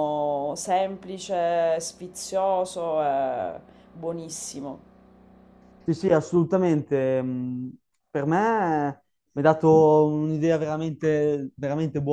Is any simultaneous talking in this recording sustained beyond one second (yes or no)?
no